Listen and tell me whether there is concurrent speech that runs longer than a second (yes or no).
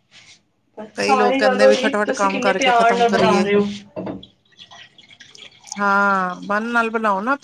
yes